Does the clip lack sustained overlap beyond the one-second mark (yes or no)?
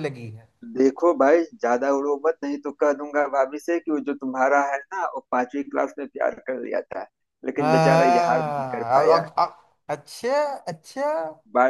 no